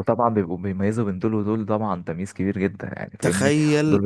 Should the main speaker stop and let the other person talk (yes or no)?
yes